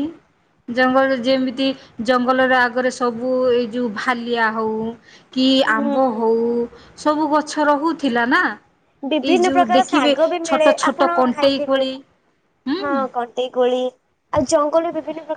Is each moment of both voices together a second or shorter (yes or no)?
no